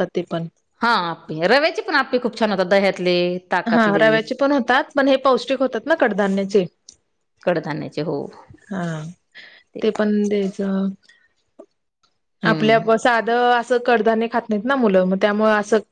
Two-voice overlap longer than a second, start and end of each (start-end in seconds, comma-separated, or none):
none